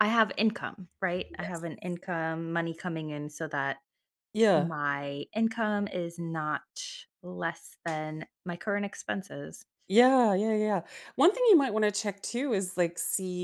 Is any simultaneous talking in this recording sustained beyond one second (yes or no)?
no